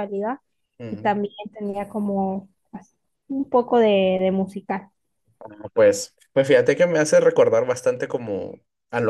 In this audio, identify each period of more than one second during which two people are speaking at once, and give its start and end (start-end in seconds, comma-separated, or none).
none